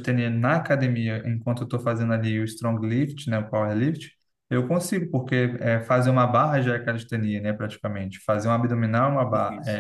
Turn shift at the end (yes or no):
no